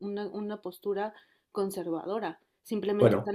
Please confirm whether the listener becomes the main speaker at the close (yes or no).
no